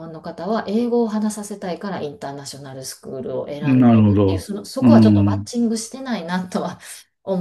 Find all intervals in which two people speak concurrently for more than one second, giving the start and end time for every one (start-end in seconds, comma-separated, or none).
3.6-5.5